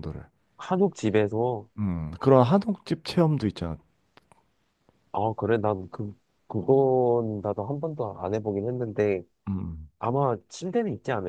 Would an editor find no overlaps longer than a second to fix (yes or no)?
yes